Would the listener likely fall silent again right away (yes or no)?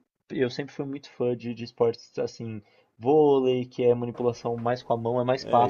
no